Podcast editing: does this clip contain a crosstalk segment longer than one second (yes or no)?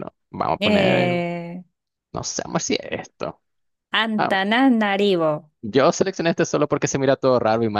no